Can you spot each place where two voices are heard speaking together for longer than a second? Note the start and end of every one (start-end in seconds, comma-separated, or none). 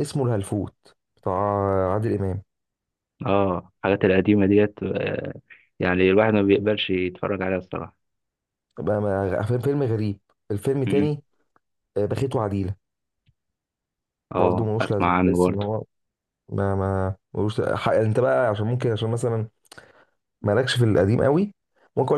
14.3-15.7